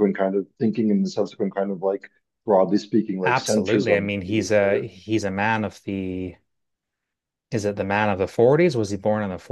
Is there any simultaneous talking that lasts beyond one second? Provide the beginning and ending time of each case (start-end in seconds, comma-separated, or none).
3.2-4.9